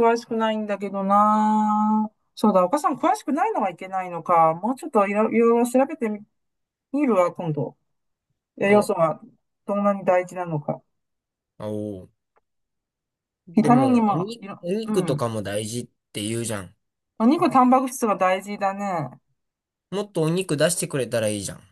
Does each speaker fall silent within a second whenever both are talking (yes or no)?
no